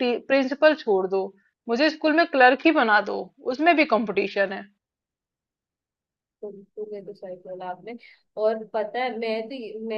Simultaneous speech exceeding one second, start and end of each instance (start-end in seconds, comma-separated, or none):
none